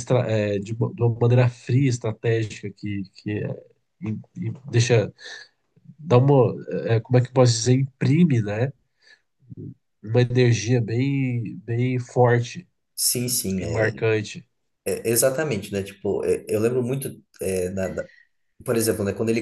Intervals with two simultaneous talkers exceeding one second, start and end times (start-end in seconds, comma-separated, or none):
none